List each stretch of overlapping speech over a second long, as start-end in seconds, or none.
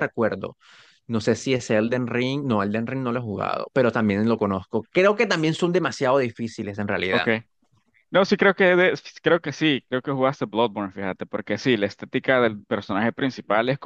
none